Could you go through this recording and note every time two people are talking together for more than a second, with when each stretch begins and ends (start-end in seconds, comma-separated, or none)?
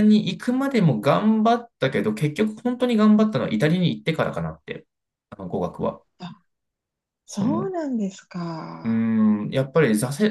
none